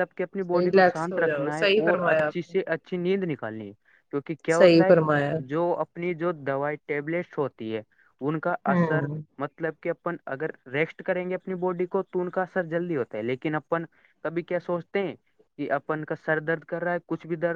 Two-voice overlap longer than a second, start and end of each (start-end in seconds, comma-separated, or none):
0.5-2.6